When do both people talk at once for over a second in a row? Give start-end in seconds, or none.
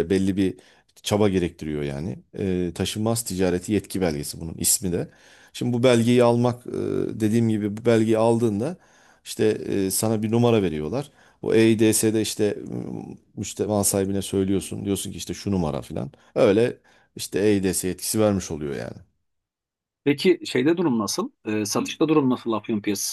none